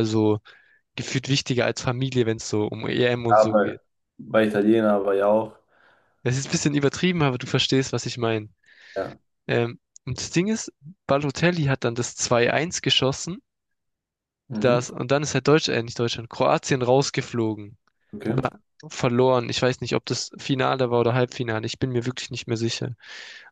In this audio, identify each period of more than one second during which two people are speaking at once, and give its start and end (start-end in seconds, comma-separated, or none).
none